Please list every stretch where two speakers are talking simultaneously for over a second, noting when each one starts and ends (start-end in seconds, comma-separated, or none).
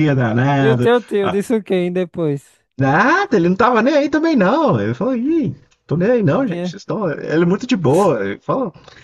none